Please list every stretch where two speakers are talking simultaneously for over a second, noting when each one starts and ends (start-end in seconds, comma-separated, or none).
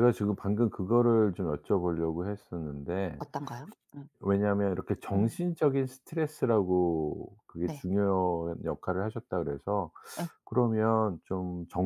none